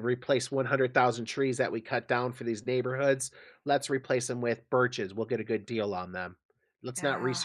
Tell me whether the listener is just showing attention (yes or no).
yes